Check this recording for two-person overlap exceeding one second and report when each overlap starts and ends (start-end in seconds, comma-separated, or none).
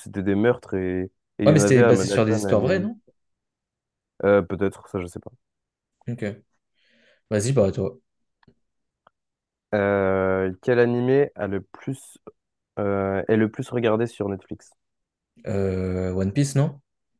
1.5-2.9